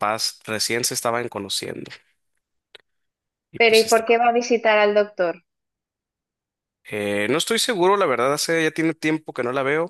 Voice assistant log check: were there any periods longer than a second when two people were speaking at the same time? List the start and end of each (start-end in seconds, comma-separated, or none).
none